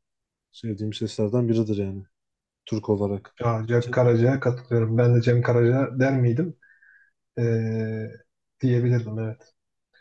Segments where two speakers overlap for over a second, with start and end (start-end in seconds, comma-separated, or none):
none